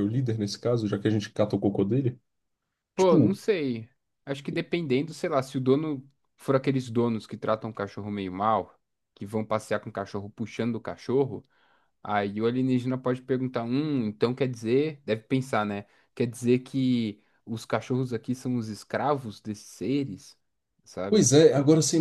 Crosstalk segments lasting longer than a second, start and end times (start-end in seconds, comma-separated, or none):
none